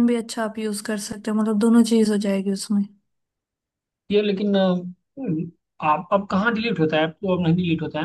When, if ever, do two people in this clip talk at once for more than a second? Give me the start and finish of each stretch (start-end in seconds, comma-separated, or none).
none